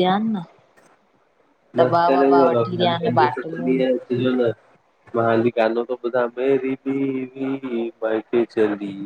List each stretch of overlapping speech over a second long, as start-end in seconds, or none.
1.8-3.7